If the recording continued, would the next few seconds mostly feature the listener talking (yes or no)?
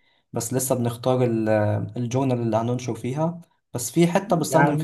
no